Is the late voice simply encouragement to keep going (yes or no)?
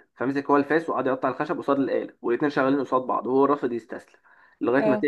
yes